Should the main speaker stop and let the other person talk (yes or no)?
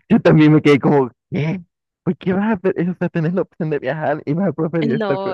yes